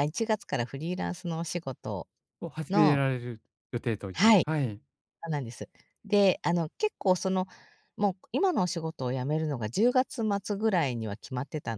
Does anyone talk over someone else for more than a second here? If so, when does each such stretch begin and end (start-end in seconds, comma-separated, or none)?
none